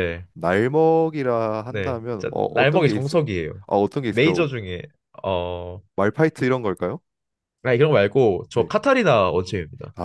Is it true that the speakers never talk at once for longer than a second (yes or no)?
no